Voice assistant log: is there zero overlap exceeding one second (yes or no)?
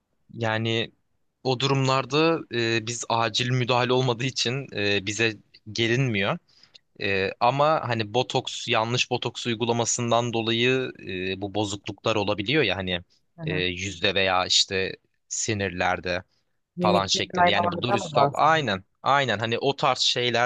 no